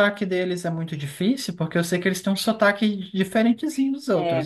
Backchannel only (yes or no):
no